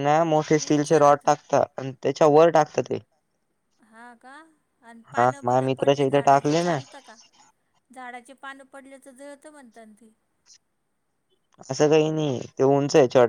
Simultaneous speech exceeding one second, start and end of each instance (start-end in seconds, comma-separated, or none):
5.2-6.8